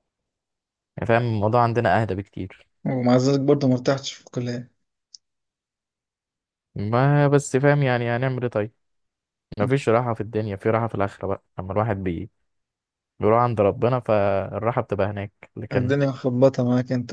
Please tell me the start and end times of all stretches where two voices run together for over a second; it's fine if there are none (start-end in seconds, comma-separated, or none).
none